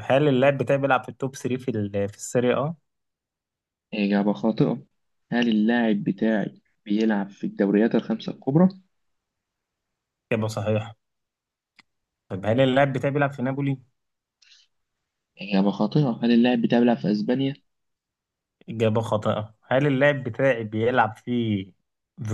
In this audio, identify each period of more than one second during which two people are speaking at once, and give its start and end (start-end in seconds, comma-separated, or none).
none